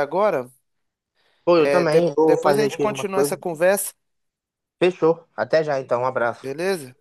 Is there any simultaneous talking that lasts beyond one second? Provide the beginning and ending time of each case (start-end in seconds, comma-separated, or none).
1.6-3.4